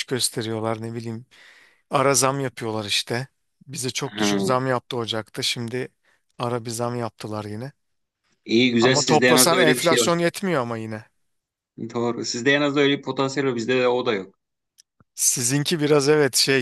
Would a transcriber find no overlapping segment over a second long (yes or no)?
no